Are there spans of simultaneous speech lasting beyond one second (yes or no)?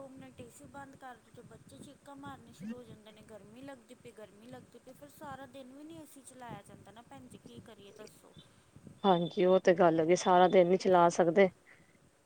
no